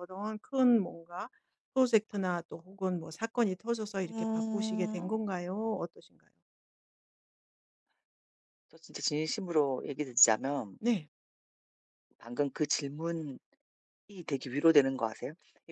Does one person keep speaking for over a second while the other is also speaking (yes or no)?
yes